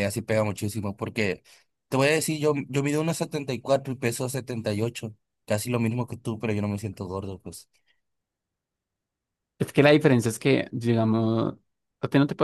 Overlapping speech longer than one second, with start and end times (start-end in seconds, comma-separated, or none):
none